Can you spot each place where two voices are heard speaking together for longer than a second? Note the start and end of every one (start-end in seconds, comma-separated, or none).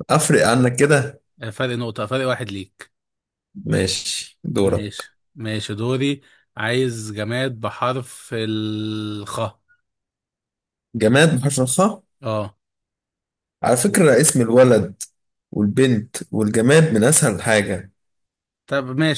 none